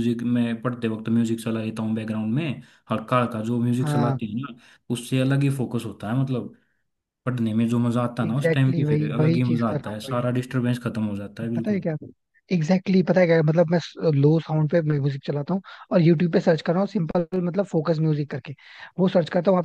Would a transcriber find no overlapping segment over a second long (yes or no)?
no